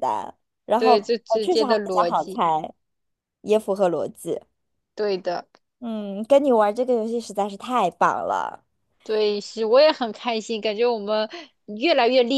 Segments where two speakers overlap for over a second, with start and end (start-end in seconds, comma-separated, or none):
0.8-2.4